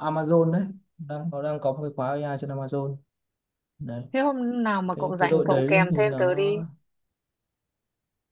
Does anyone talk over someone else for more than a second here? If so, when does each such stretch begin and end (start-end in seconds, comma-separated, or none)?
4.9-6.5